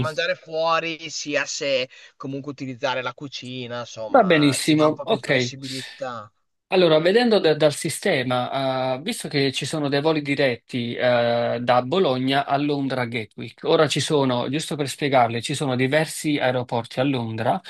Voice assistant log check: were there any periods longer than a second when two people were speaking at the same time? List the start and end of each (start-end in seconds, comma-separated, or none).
4.1-5.6